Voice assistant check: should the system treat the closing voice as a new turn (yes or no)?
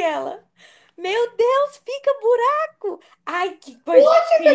yes